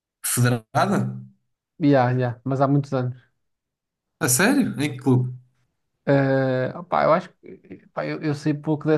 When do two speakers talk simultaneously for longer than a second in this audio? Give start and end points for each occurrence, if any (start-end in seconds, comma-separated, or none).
none